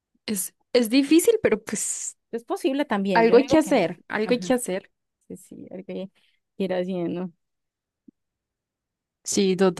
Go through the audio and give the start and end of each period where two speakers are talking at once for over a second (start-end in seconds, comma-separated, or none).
3.1-4.5